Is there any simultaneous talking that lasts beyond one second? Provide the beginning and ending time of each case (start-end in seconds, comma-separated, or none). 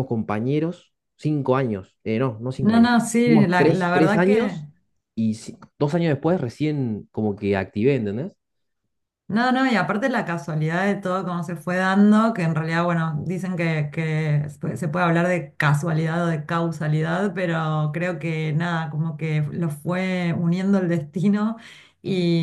2.7-4.6